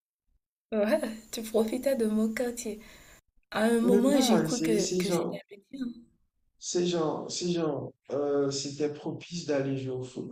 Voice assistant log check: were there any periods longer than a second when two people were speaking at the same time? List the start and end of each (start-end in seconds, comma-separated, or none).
3.8-5.4